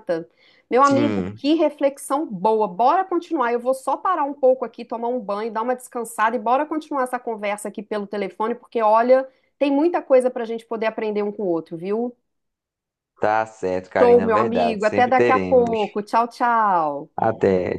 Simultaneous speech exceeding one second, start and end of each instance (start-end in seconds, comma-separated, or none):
13.8-15.8